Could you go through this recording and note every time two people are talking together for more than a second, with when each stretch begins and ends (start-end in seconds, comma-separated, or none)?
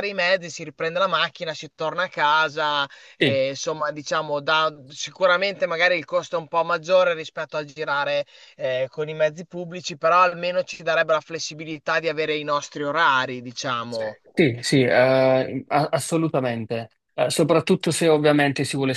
none